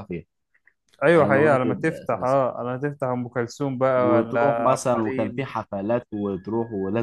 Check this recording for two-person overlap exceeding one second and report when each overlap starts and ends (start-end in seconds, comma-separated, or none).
1.1-2.4, 4.0-5.5